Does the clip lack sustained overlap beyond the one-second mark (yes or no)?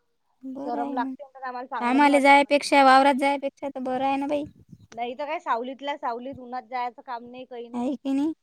no